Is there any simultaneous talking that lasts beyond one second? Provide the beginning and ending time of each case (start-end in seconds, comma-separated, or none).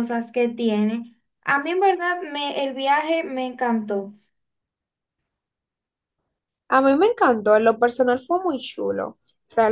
none